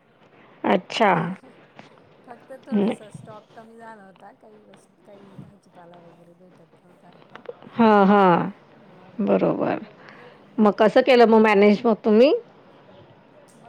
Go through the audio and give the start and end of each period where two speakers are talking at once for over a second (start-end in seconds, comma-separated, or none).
none